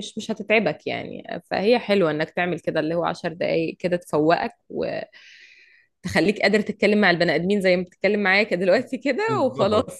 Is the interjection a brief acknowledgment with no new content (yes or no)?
no